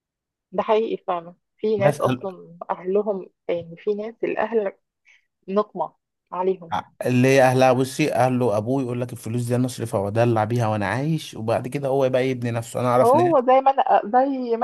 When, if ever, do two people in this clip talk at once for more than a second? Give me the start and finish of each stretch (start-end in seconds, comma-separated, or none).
none